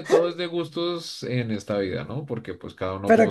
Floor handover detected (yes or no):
yes